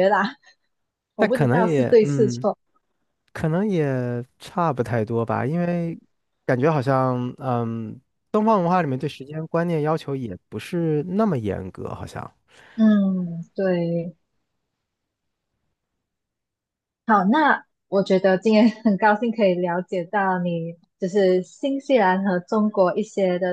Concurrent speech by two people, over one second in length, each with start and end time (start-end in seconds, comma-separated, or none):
1.2-2.5